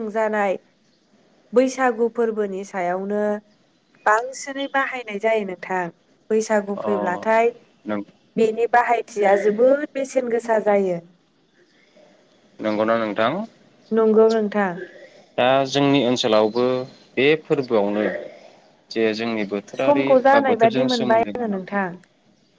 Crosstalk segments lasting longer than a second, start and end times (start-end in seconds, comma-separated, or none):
19.8-21.6